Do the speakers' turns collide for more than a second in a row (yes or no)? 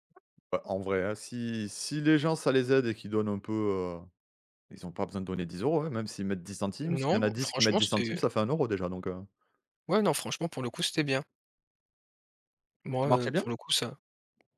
yes